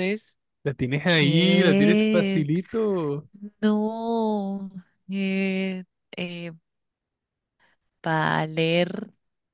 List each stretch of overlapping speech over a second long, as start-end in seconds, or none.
1.1-2.5